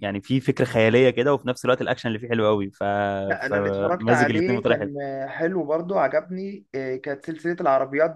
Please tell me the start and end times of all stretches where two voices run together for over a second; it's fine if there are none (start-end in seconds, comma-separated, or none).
3.5-4.9